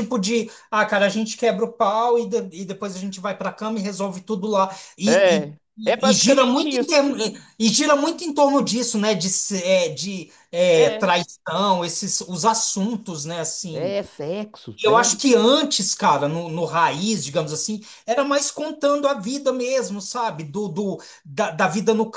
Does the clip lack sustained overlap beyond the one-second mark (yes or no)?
no